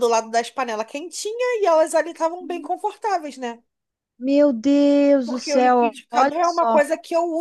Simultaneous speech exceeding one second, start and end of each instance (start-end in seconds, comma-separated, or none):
5.2-6.8